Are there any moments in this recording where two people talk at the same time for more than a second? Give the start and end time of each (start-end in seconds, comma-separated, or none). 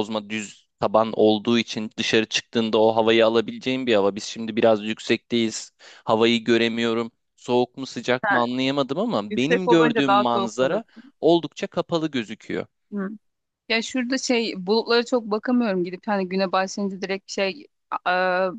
9.3-10.8